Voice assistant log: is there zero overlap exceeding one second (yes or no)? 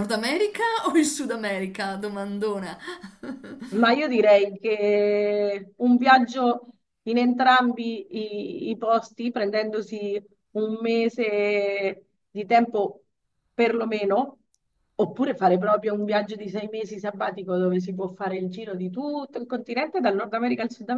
yes